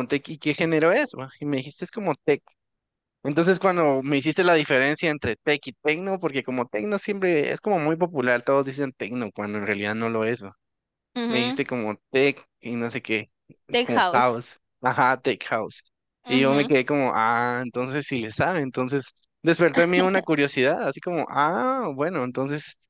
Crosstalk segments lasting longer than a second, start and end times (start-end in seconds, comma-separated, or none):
none